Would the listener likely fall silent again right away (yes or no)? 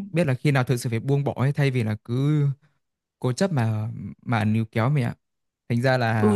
no